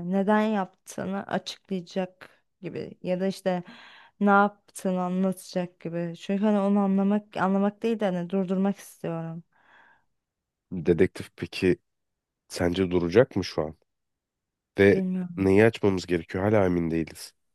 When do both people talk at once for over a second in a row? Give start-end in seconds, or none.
none